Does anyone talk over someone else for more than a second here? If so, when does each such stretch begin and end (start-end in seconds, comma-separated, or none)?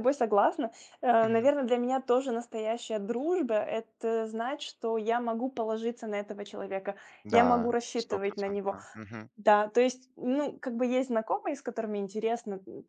7.2-8.8